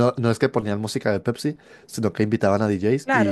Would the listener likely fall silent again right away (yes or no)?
yes